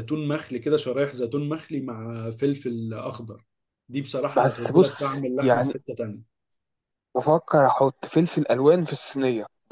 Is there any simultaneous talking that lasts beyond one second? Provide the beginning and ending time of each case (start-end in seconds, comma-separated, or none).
4.3-5.7